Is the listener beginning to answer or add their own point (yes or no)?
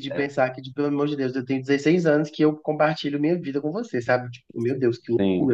yes